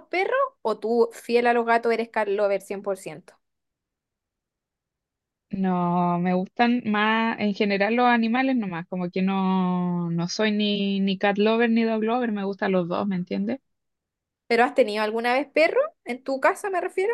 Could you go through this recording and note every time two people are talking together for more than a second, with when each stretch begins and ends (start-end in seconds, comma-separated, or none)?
none